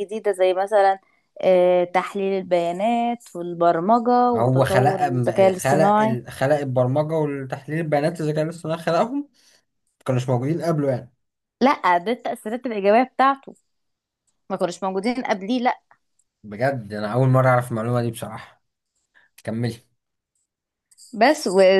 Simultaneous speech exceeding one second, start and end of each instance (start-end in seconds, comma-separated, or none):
4.3-6.2